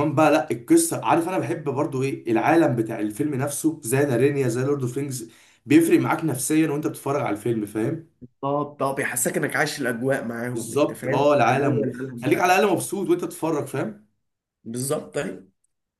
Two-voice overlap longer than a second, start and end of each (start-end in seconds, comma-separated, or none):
10.5-12.6